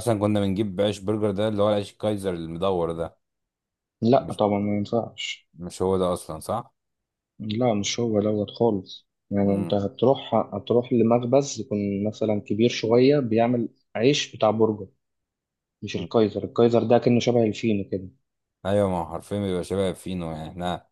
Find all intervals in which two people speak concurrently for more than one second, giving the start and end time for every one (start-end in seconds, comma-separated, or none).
none